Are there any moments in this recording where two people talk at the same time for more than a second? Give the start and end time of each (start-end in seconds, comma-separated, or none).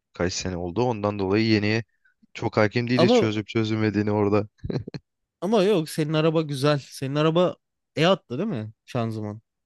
none